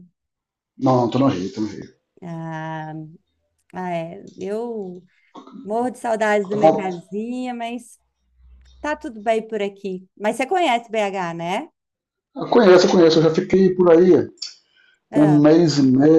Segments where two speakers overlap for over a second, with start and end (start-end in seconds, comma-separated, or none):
none